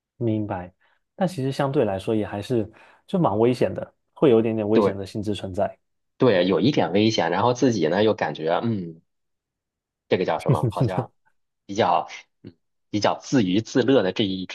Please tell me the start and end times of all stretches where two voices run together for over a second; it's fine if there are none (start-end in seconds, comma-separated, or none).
none